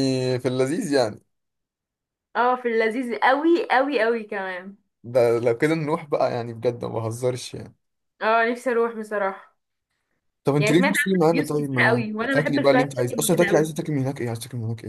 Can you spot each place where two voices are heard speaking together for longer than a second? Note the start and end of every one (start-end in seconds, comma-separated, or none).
10.6-13.7